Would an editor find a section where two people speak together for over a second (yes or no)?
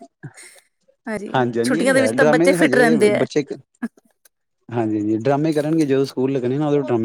yes